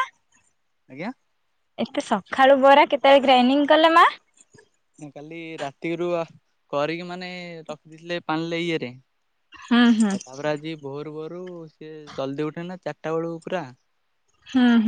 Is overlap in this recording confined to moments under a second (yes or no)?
yes